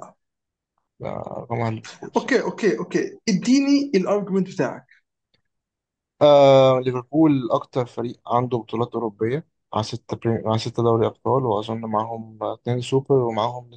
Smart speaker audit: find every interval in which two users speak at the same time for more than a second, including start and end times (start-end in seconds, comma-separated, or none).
none